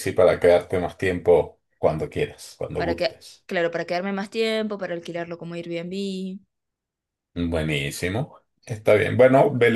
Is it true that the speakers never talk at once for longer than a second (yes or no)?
yes